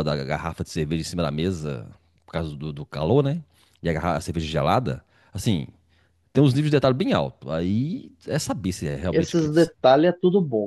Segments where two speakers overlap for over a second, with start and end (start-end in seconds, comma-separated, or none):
none